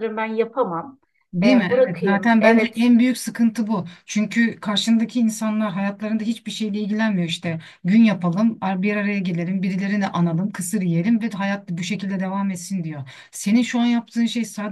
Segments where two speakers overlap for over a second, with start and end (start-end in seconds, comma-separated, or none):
1.4-2.9